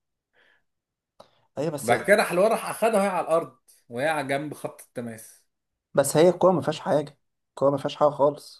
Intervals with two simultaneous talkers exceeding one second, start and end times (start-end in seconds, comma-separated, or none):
none